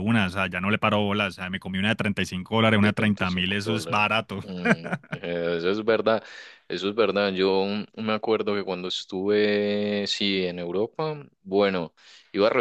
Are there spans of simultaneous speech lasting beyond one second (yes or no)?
yes